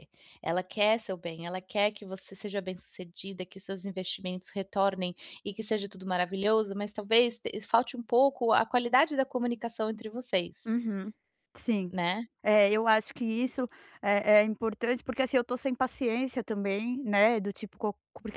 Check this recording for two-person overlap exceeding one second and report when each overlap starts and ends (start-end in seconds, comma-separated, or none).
none